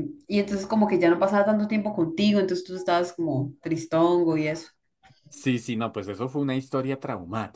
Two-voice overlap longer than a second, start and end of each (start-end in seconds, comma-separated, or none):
none